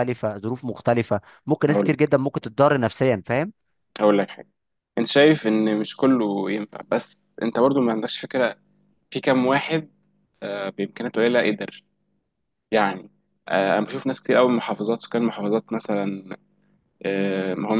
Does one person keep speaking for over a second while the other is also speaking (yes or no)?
no